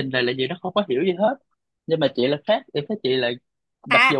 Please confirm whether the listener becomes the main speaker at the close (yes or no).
yes